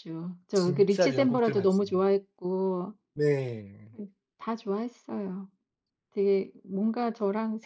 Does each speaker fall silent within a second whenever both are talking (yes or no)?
no